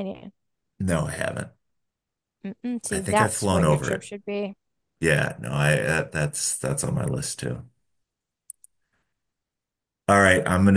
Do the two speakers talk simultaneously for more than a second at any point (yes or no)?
yes